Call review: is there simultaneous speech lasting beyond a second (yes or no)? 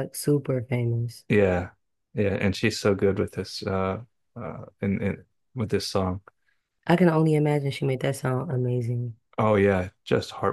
no